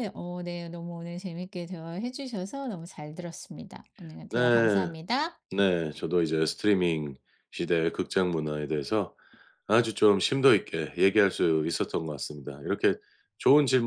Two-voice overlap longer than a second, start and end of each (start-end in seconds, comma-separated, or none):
none